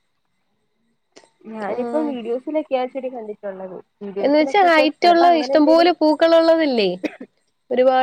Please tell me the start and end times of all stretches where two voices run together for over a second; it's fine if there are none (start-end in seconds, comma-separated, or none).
4.2-5.9